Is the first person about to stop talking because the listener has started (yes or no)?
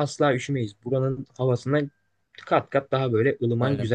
yes